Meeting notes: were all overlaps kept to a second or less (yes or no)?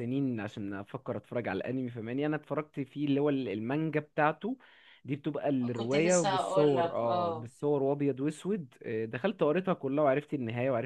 no